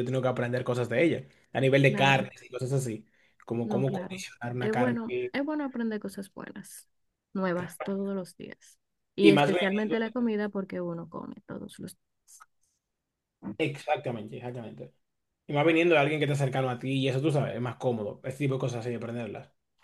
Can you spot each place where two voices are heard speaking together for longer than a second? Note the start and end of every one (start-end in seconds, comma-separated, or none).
3.6-5.3